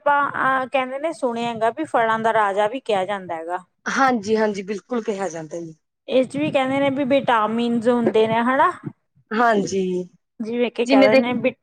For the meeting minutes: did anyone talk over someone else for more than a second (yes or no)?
no